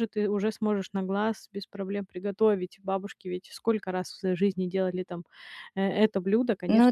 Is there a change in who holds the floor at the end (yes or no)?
no